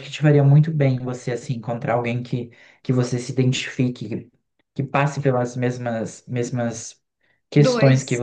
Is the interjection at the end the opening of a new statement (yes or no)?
no